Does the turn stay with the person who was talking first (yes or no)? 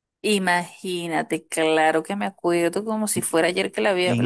no